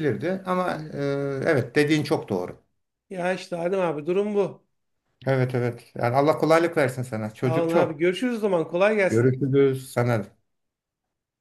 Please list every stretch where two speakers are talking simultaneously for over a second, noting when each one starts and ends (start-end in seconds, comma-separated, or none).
none